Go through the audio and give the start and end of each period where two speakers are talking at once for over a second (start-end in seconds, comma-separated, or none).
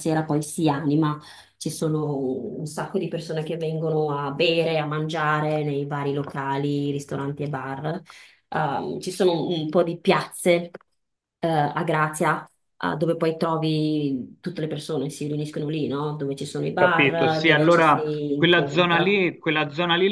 16.8-19.2